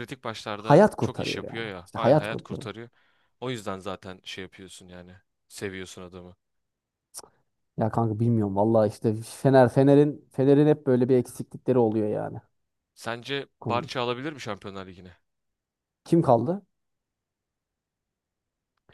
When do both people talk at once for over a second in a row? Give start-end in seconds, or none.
0.6-2.7